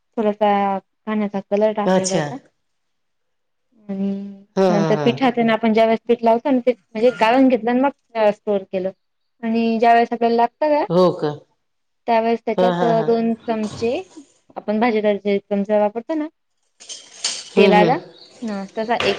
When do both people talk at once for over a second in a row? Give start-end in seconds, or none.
none